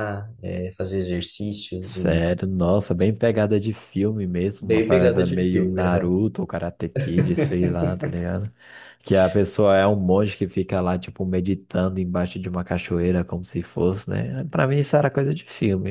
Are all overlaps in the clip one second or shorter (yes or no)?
no